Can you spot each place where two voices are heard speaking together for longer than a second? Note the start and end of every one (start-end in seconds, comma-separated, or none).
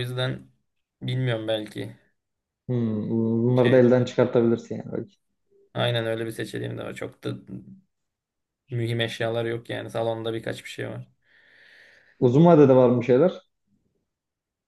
none